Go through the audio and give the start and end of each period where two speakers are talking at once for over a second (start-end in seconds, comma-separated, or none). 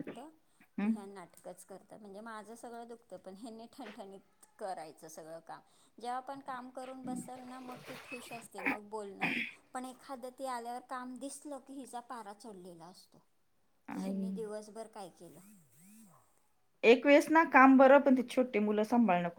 none